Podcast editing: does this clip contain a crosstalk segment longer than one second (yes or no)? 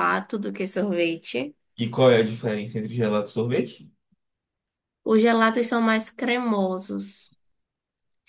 no